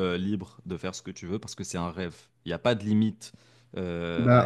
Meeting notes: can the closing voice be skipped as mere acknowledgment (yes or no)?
no